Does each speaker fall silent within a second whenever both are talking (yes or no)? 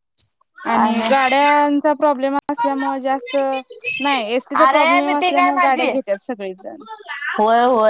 no